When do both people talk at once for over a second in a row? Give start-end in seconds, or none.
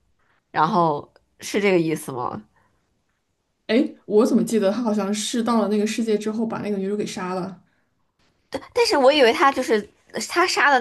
none